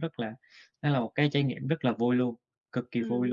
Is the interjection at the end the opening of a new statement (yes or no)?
yes